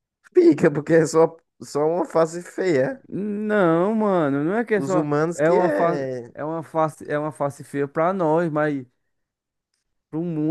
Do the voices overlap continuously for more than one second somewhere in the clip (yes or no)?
yes